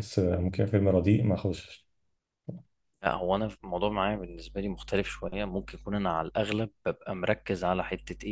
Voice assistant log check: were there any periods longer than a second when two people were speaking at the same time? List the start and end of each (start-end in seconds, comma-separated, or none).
none